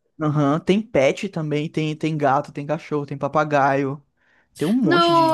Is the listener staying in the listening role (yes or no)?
no